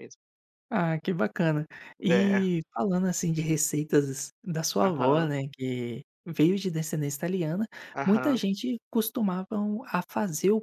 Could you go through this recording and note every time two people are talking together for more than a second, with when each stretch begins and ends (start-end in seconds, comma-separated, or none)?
none